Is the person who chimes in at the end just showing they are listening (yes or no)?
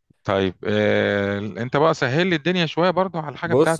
no